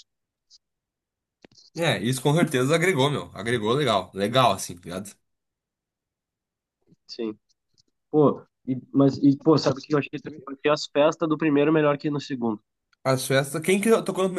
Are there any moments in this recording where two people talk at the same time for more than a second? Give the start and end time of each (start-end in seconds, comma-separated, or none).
none